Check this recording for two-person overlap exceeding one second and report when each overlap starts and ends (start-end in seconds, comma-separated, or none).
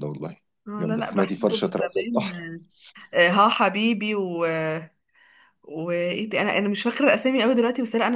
0.8-2.3